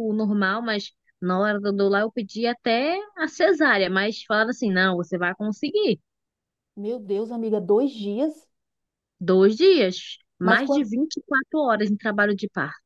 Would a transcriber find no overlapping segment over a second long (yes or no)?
yes